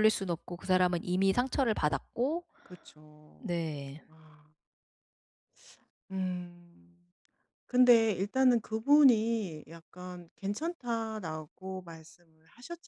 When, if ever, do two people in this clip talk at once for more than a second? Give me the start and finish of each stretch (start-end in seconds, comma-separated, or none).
none